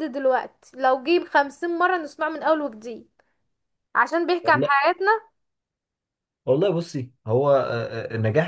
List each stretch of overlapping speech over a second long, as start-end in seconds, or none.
none